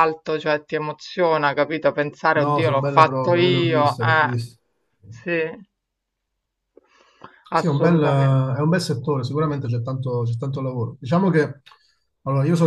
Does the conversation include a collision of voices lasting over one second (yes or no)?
yes